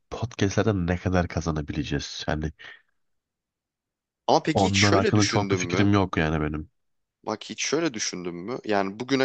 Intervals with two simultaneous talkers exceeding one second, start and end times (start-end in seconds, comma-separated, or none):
4.5-5.9